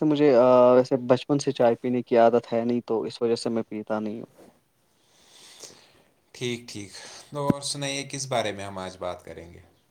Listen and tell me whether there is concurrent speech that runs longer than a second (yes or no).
no